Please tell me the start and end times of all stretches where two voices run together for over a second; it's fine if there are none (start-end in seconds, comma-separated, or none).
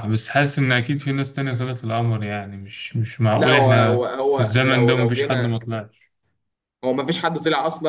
3.3-5.6